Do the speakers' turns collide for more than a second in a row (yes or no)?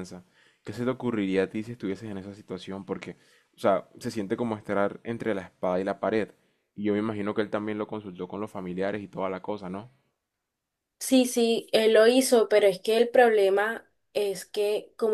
no